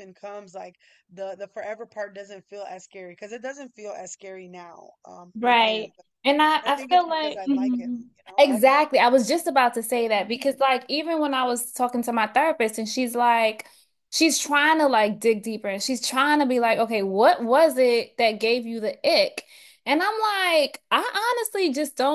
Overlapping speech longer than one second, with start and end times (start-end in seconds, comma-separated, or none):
6.6-8.4